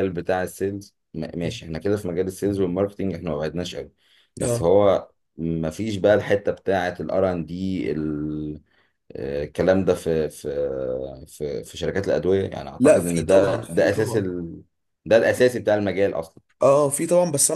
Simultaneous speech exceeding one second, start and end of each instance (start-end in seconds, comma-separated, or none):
12.8-14.3